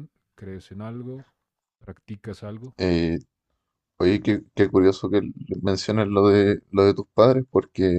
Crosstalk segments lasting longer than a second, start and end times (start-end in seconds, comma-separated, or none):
none